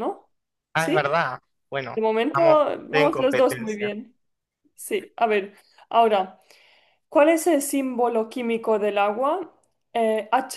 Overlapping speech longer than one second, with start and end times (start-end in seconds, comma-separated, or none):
1.9-3.9